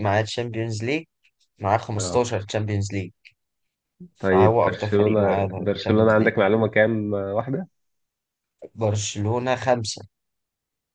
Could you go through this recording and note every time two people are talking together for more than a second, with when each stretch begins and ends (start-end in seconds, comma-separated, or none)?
4.3-6.3